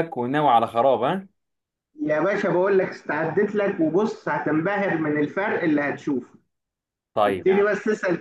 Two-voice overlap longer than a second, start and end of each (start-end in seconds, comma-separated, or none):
none